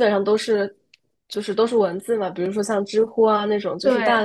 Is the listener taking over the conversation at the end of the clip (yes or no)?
no